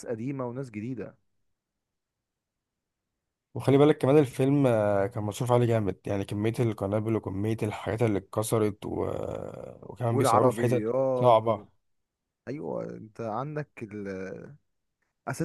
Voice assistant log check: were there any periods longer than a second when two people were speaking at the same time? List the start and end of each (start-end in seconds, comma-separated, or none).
10.1-11.5